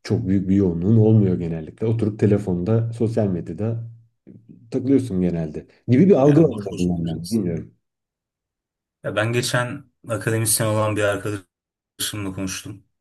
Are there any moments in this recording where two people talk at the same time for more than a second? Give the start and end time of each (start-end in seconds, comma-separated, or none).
6.2-7.4